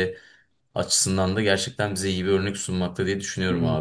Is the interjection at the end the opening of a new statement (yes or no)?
yes